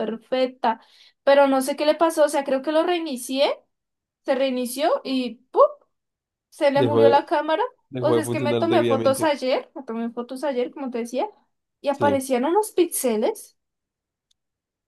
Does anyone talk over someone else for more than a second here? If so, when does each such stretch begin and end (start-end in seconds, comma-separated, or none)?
8.0-9.3